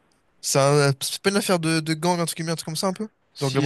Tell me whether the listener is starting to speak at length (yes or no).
yes